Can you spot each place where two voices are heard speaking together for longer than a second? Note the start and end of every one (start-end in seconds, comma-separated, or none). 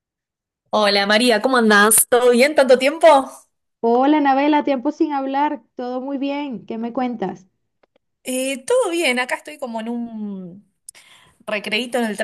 none